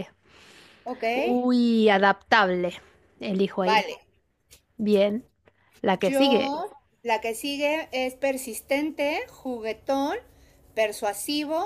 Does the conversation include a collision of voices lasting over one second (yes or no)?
no